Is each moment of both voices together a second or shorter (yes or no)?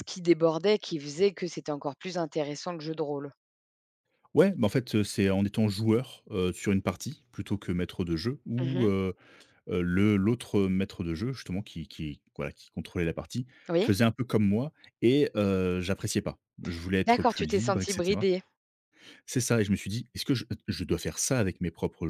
no